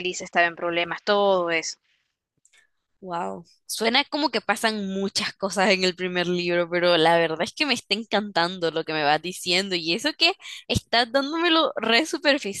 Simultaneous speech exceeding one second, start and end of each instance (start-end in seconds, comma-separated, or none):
none